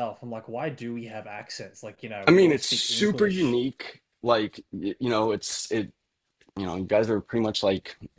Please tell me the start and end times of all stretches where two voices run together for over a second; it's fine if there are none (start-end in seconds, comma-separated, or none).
2.3-3.6